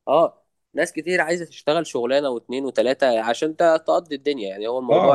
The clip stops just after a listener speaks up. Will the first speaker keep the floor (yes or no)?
no